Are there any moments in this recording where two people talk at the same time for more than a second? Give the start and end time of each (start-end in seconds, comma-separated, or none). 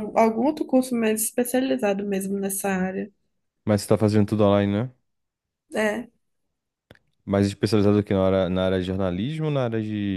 none